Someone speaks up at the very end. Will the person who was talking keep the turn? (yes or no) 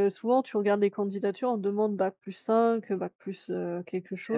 no